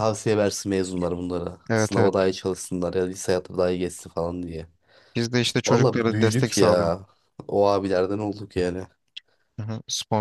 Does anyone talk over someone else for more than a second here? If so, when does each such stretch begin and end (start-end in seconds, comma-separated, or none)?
5.7-6.9